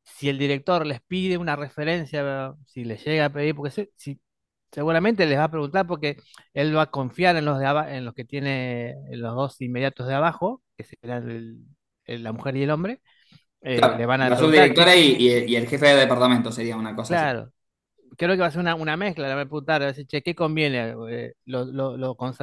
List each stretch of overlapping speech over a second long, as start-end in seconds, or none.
13.7-15.5